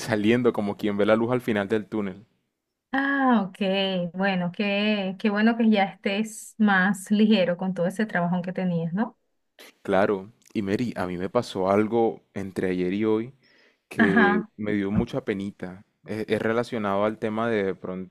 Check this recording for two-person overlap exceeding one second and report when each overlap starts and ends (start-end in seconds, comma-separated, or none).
none